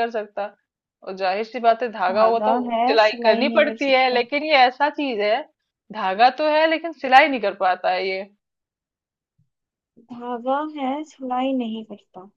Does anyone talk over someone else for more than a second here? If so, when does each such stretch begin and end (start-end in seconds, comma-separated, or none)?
2.1-4.2